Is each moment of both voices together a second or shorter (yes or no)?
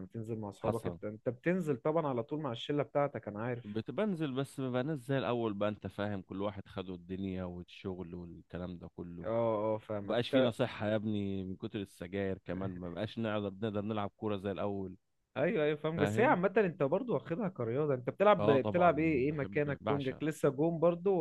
no